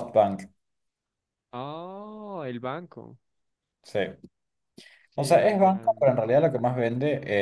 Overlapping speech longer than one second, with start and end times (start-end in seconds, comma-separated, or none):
5.2-6.4